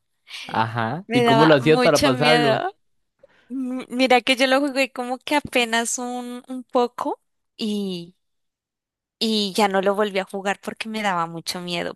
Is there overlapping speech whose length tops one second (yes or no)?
yes